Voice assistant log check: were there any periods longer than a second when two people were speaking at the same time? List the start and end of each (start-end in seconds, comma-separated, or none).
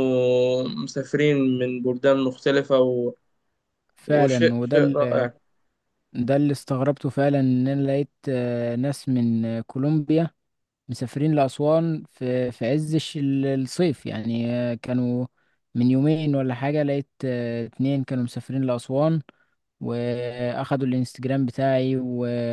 4.1-5.3